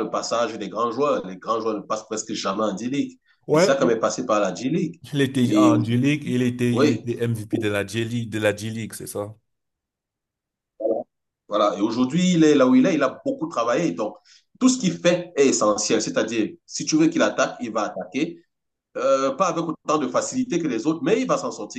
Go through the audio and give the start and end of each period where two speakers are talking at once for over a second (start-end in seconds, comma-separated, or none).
none